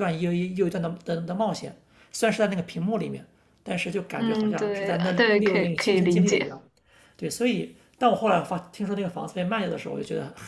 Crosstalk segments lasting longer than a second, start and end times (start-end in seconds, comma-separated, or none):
4.2-6.5